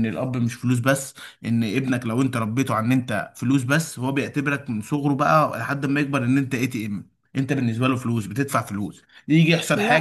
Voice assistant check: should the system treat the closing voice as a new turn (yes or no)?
no